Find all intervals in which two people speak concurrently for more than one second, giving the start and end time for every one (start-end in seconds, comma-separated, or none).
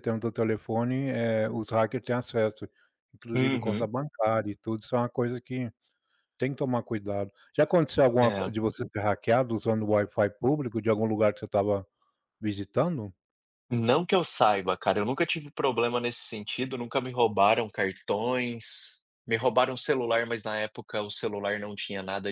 none